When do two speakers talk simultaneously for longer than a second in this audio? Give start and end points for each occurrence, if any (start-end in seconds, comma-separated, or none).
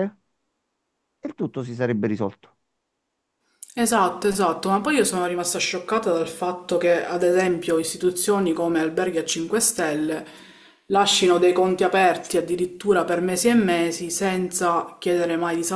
none